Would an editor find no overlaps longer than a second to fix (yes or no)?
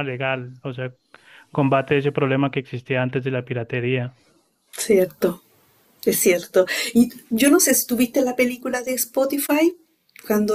yes